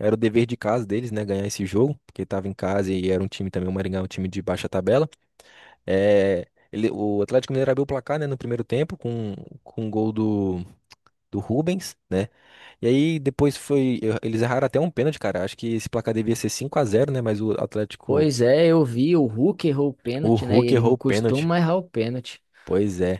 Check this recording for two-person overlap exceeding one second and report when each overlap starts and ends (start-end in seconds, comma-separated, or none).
20.2-21.5